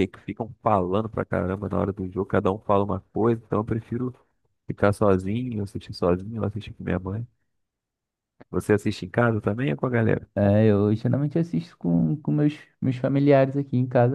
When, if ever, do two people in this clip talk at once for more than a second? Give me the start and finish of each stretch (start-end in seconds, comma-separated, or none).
none